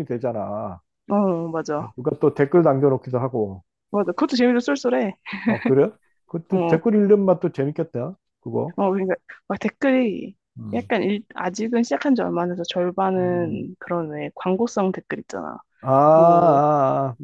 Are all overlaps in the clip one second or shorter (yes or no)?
yes